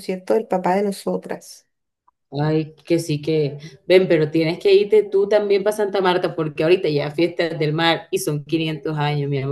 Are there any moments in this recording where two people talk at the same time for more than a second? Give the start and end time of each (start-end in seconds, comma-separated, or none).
none